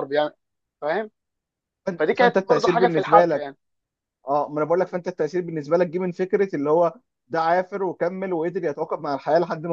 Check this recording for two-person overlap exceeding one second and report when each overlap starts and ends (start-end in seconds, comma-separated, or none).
2.0-3.5